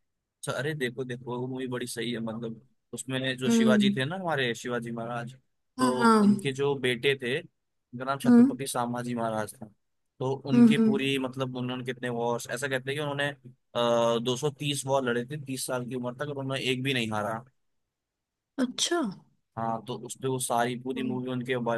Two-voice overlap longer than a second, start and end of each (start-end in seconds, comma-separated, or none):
none